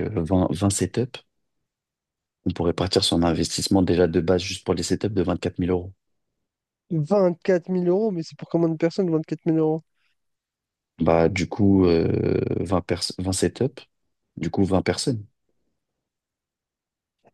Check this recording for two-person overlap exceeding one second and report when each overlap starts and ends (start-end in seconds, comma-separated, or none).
none